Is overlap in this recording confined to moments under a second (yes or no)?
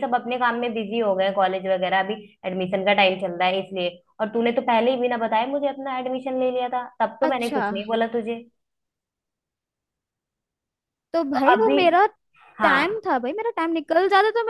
yes